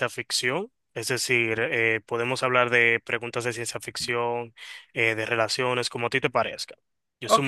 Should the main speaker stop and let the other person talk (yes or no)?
yes